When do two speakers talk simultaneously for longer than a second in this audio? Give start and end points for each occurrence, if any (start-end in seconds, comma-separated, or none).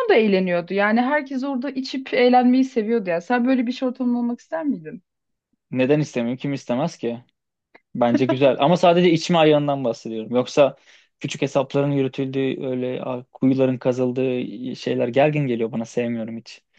none